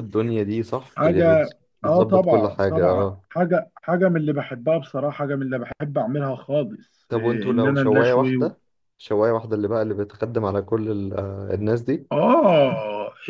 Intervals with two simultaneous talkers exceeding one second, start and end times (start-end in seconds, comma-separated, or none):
1.0-3.2, 7.1-8.5